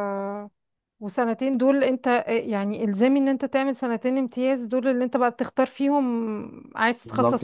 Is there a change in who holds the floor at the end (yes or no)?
yes